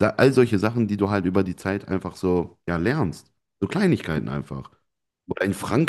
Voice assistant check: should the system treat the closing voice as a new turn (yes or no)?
no